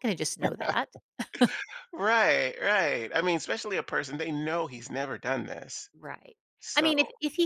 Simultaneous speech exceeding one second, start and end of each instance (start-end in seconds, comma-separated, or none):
none